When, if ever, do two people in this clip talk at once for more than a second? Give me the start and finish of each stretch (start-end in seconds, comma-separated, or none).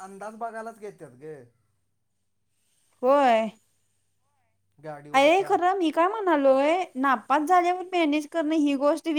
none